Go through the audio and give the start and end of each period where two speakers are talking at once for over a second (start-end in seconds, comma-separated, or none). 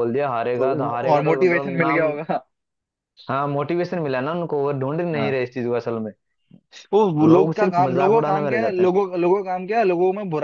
0.6-2.1, 7.3-8.9